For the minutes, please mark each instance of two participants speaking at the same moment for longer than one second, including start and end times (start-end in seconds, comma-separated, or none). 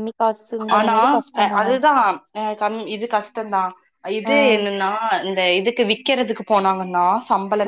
none